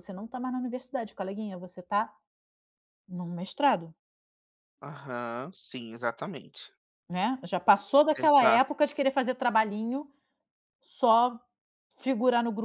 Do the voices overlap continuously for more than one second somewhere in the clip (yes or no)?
no